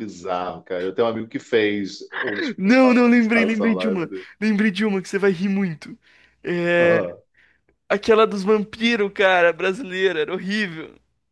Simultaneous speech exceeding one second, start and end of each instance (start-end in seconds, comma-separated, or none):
2.6-4.3